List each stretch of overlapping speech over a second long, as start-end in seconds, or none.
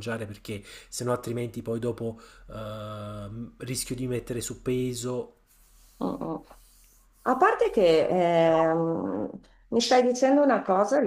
none